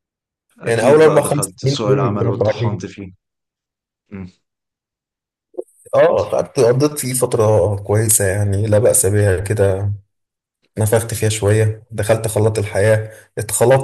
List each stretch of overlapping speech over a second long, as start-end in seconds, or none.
0.6-3.0